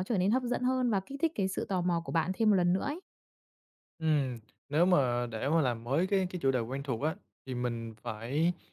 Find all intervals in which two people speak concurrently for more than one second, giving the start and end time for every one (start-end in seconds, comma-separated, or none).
none